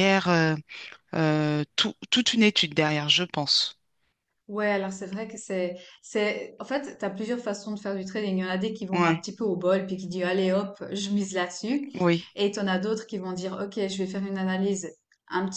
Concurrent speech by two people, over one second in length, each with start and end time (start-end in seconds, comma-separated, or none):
none